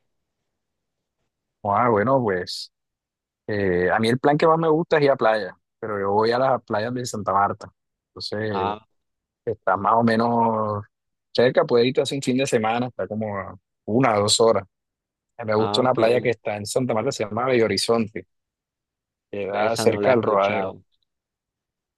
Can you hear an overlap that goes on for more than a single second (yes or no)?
yes